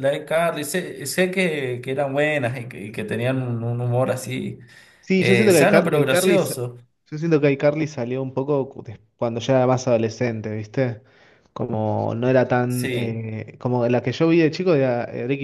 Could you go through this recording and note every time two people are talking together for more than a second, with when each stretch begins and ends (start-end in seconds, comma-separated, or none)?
5.2-6.5